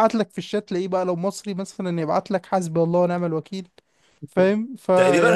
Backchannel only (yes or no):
no